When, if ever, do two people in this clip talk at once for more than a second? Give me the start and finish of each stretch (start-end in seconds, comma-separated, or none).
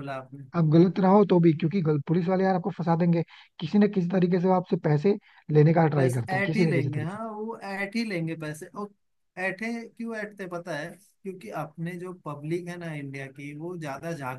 6.0-7.2